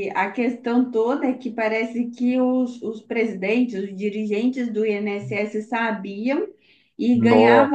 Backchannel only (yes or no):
yes